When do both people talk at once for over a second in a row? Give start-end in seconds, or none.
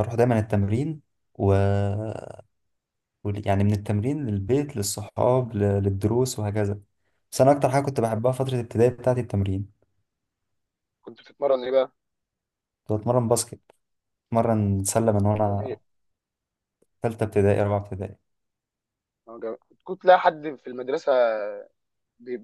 none